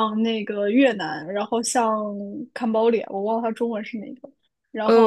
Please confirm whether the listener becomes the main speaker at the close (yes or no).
yes